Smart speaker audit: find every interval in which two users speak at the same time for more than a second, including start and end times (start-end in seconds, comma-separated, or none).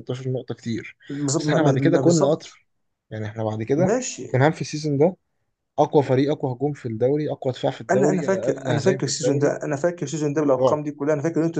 1.4-2.6, 7.9-9.6